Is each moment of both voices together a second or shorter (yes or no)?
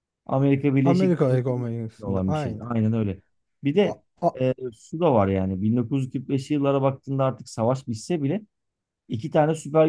no